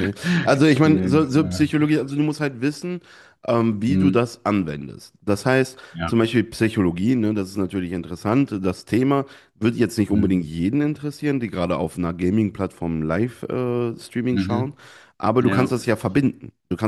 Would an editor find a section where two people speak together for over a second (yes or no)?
yes